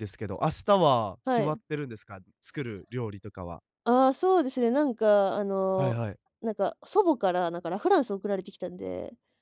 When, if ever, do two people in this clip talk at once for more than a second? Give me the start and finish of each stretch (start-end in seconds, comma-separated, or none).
none